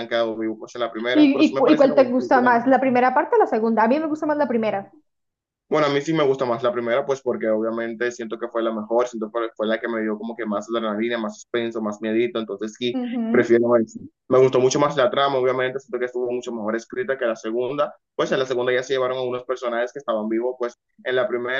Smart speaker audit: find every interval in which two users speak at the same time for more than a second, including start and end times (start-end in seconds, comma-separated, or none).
1.1-2.5